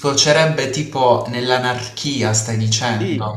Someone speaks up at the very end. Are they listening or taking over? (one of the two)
taking over